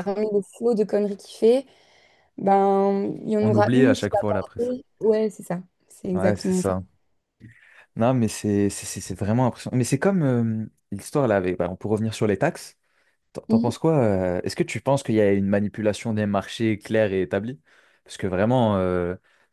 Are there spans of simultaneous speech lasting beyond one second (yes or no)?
yes